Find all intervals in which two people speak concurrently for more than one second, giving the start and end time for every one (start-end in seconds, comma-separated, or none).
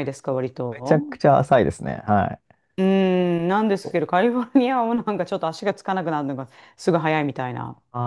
none